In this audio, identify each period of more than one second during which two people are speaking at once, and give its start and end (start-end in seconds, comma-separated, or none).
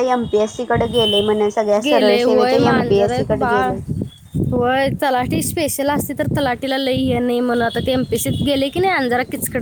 none